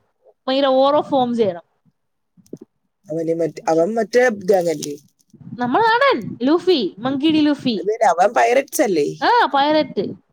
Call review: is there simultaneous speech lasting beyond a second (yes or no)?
no